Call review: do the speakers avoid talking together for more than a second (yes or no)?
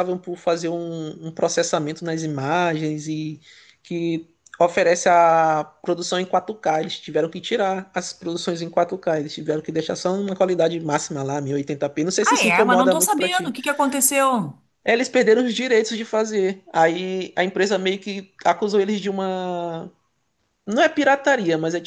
no